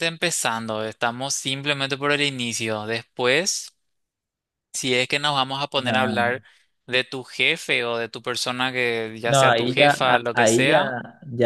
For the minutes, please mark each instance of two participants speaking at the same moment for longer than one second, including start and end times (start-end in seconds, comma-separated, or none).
9.2-10.9